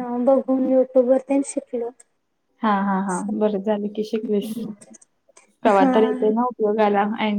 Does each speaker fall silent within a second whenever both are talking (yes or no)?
yes